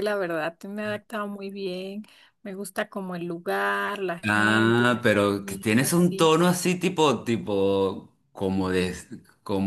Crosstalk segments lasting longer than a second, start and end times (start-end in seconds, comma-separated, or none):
4.2-6.3